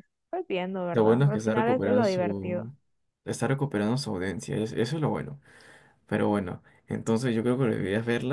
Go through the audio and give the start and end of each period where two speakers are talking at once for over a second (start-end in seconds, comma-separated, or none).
0.9-2.7